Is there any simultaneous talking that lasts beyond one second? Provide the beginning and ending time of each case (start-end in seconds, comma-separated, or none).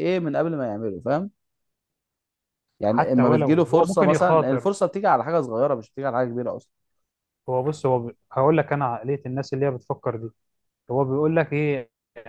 2.9-4.7